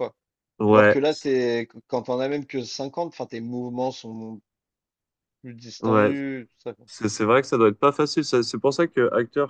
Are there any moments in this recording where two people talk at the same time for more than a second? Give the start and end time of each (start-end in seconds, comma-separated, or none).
none